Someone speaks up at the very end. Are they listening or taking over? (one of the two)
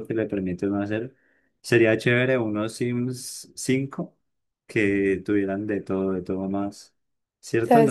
taking over